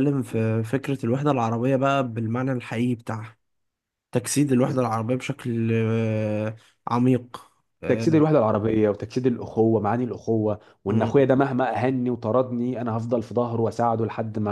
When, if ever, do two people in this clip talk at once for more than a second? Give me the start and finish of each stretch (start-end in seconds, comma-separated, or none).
none